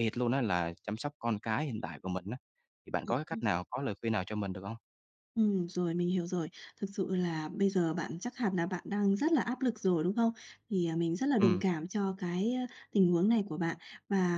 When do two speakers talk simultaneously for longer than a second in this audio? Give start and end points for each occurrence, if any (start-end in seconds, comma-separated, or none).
none